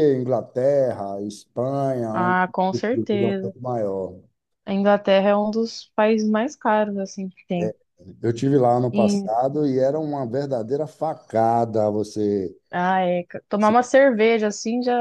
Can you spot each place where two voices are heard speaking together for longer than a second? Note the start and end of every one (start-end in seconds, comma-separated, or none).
2.1-3.5